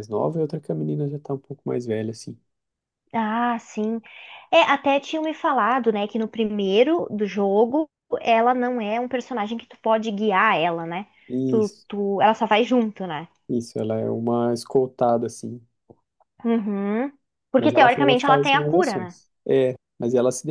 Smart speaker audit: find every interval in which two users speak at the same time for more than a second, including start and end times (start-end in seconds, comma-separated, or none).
17.6-19.2